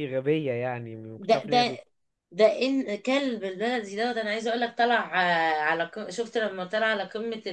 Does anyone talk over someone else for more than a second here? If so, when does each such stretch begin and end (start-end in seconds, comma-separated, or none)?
none